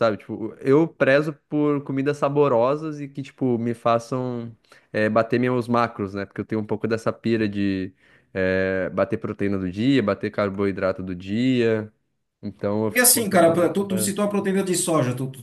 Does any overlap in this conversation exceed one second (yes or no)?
yes